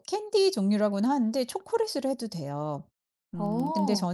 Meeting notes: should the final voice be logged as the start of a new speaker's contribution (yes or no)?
no